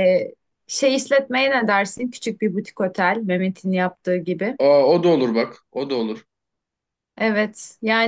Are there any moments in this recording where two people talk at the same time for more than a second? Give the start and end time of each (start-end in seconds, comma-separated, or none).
none